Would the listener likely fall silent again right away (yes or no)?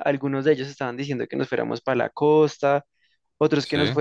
yes